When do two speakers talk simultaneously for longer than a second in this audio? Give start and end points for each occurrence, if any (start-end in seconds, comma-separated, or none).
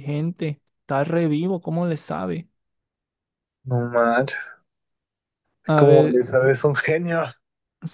none